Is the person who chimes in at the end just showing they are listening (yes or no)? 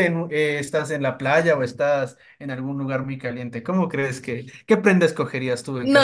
no